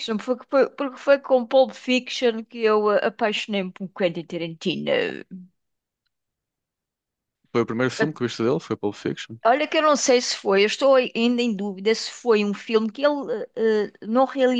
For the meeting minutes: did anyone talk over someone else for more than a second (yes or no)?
no